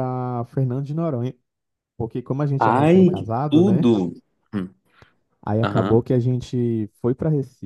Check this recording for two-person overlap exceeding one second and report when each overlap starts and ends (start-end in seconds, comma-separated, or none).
2.6-3.9